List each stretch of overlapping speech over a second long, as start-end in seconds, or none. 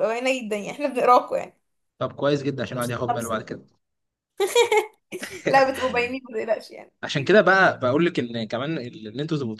none